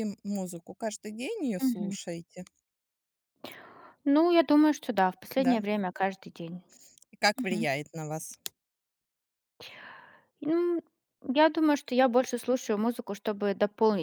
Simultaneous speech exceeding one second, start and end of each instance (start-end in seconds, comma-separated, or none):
none